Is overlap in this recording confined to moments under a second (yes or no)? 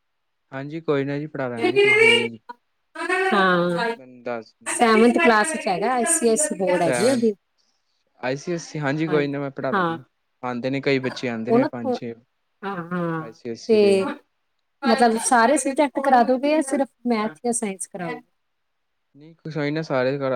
yes